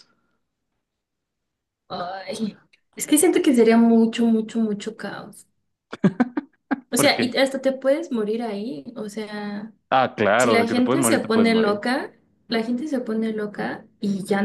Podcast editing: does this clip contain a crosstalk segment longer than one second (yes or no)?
yes